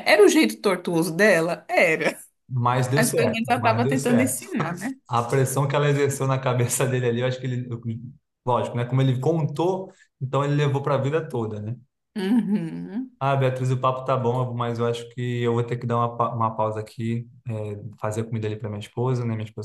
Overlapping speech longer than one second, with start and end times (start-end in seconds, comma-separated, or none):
3.0-4.4